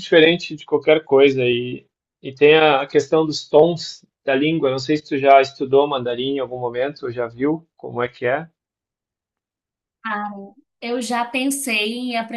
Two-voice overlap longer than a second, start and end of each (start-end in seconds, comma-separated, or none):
none